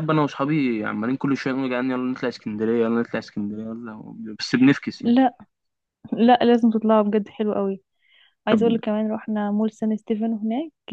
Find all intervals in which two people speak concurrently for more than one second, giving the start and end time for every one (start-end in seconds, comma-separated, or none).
none